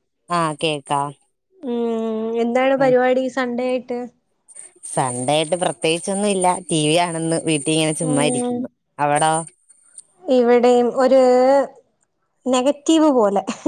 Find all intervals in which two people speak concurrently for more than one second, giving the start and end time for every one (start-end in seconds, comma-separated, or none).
none